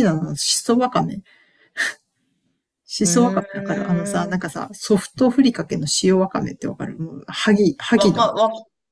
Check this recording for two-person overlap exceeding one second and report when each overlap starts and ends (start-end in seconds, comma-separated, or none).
3.0-4.4